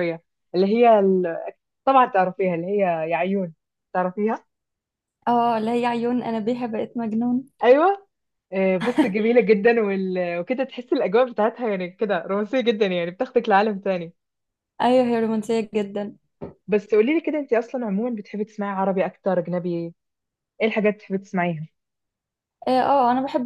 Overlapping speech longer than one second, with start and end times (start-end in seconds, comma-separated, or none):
none